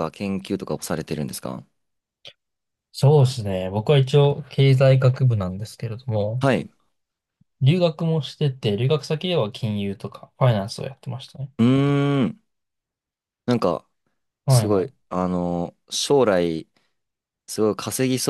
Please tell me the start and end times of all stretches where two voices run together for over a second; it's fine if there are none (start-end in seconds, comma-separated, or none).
none